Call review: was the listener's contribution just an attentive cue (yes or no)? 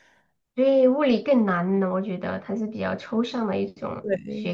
no